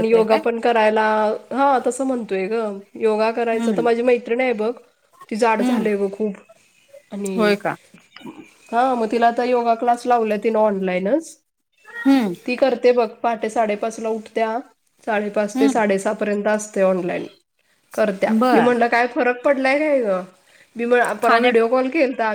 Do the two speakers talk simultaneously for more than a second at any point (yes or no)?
no